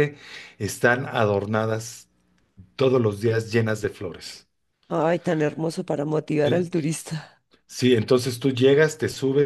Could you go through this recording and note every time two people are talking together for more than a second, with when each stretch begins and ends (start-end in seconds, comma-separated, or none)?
none